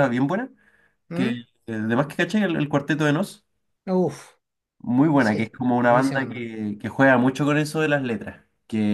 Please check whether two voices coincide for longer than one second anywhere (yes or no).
yes